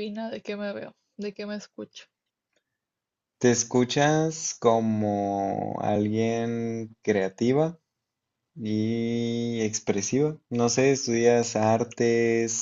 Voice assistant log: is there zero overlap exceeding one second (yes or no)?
yes